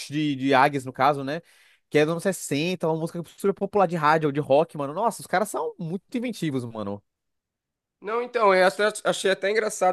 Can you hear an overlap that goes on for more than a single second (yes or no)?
no